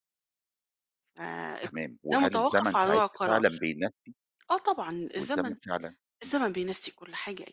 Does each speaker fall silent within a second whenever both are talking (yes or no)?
no